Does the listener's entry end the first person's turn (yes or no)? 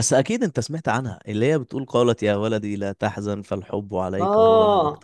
yes